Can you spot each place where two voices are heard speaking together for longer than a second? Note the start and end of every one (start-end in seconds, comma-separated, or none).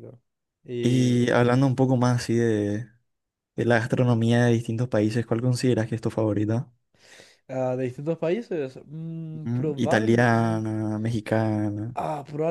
9.3-10.6